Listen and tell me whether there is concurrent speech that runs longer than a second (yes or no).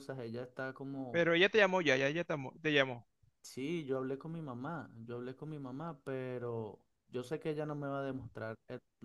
no